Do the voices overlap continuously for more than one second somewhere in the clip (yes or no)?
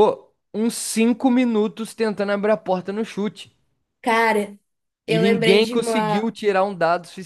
yes